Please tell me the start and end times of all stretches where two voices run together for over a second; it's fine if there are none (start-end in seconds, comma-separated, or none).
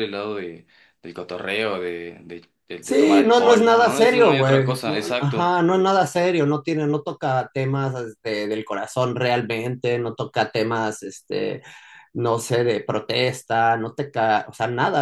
2.8-5.5